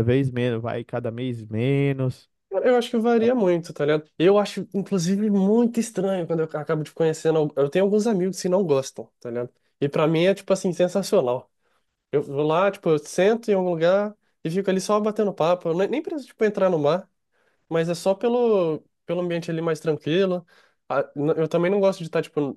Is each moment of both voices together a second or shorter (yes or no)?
yes